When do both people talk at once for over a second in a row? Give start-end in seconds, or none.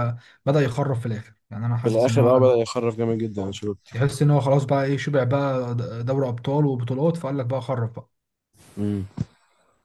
none